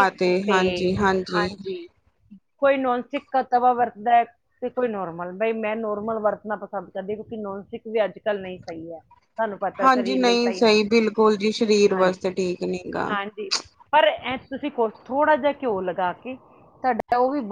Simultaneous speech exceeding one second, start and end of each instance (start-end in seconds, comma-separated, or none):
none